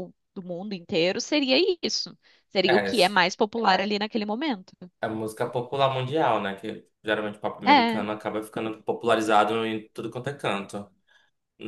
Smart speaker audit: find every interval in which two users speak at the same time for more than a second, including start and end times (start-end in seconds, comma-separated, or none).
none